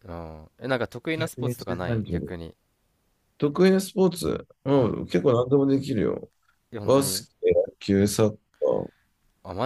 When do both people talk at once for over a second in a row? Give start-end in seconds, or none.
1.1-2.3